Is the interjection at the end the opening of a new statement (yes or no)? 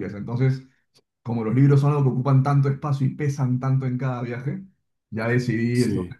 no